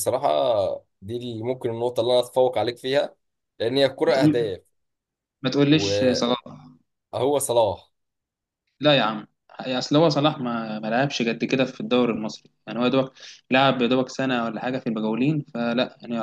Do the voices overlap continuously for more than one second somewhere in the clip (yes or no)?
no